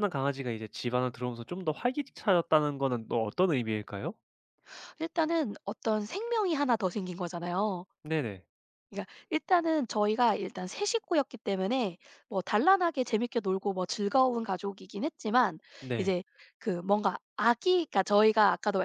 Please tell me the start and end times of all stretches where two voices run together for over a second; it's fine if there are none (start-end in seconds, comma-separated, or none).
none